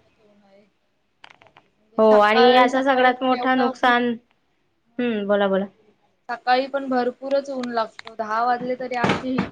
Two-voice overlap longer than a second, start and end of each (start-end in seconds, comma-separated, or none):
2.0-3.7